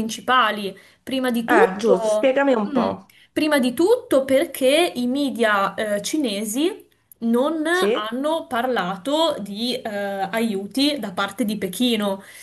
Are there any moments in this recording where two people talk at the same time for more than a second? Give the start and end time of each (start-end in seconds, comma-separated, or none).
1.5-2.9